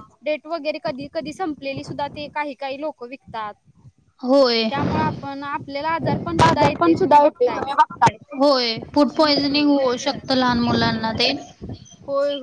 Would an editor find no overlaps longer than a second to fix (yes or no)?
no